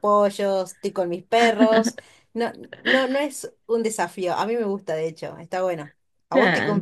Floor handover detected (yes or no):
yes